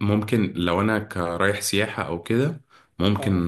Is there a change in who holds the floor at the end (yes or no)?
no